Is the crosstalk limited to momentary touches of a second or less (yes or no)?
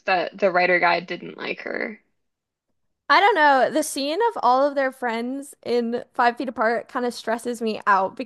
yes